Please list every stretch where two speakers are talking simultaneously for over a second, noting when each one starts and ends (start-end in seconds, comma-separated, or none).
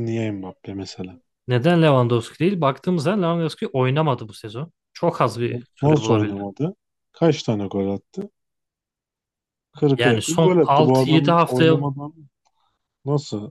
10.0-11.7